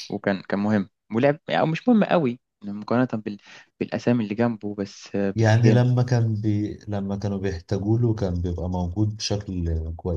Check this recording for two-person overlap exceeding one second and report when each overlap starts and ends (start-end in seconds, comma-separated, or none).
none